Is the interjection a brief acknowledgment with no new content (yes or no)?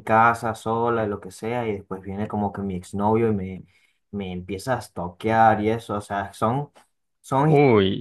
yes